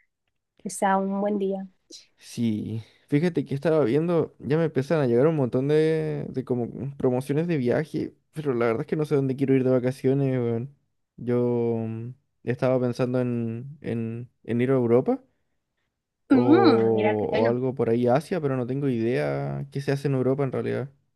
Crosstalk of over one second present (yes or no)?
yes